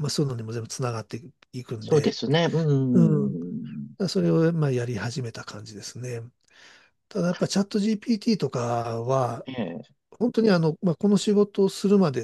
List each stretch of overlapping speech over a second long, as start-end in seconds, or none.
none